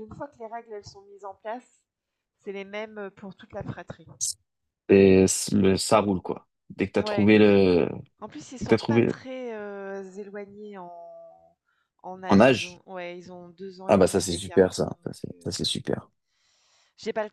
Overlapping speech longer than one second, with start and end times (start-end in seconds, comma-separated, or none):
13.9-15.6